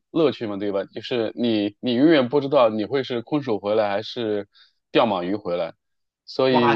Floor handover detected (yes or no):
yes